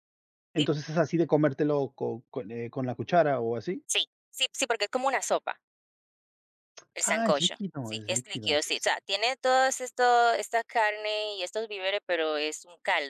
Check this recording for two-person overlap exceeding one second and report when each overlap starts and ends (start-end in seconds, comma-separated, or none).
7.0-8.7